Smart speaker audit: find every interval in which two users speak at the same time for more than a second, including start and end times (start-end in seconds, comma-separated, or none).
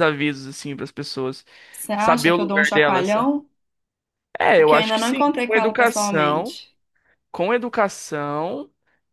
1.9-3.1, 4.6-6.6